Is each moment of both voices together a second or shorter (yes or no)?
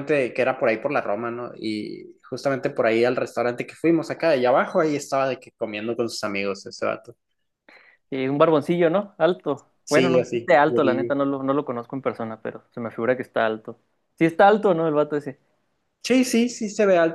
no